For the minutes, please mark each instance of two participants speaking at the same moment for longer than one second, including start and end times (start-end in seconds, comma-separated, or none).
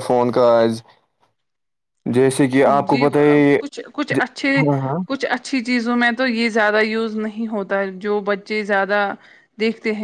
none